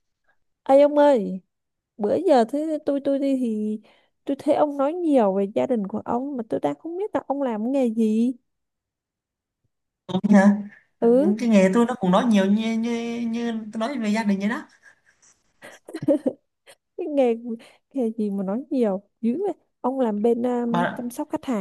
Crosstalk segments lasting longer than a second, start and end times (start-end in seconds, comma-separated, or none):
none